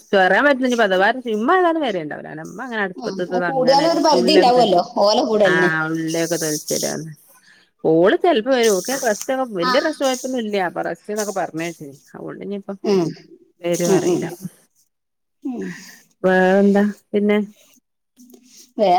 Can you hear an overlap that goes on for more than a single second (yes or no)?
yes